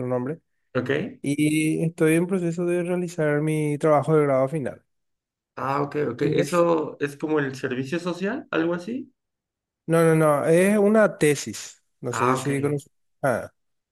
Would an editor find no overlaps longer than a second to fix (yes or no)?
yes